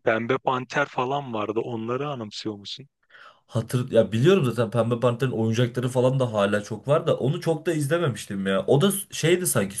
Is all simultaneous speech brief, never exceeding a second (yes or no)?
yes